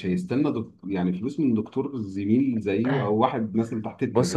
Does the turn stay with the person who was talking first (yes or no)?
no